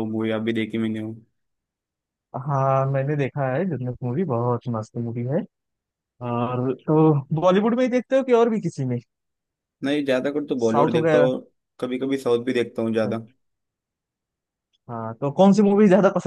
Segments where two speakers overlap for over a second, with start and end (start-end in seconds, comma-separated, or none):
none